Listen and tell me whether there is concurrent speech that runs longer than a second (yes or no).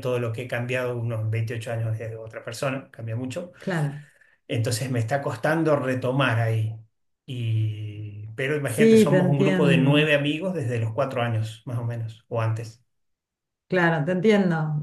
yes